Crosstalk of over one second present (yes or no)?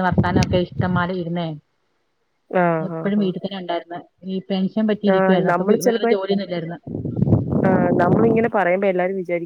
no